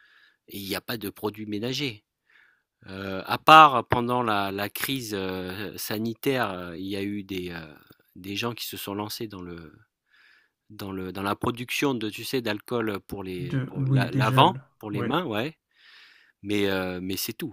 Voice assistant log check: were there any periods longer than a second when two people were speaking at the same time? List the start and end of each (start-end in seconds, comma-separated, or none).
13.4-15.1